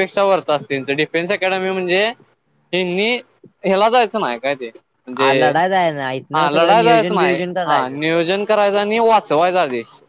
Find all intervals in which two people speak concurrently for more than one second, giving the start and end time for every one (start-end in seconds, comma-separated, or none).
6.3-8.3